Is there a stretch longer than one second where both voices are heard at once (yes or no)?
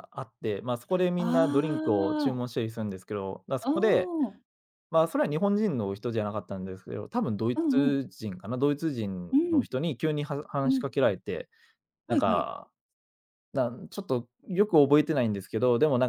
yes